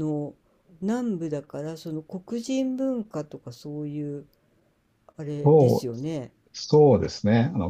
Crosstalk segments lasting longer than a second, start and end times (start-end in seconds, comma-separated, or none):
none